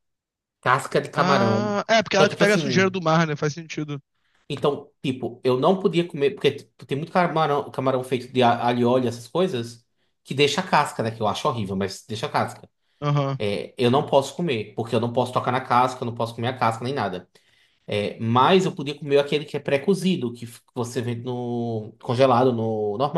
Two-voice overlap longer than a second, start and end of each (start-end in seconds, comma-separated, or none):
1.1-2.9